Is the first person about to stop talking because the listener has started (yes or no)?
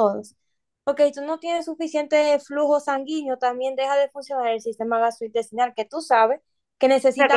yes